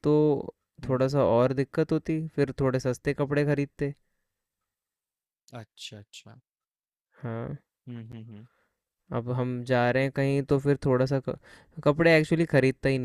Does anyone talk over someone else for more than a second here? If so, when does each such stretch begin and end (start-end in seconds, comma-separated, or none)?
none